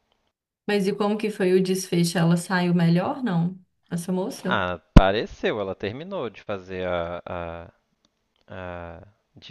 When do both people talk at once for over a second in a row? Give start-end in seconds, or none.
none